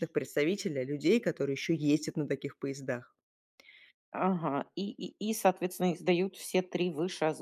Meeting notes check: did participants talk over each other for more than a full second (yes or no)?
no